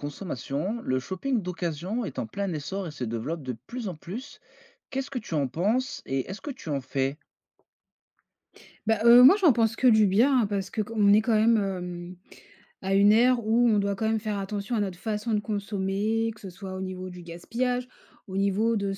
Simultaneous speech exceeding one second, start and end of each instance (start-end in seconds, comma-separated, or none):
none